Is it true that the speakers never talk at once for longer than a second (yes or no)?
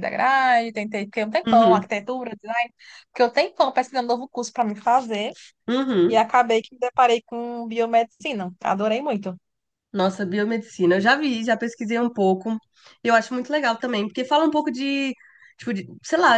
yes